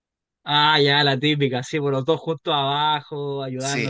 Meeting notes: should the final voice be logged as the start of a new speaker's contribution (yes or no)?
yes